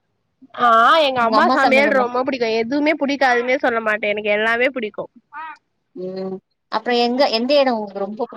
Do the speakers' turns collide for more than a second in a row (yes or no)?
no